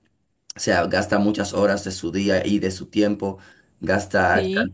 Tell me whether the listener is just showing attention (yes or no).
yes